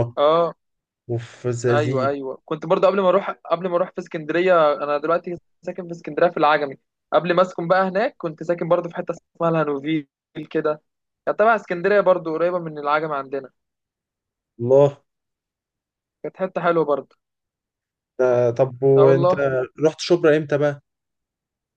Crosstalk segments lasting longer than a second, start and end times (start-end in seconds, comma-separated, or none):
none